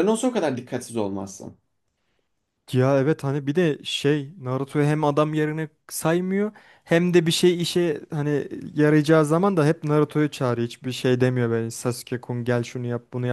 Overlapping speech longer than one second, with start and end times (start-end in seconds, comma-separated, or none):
none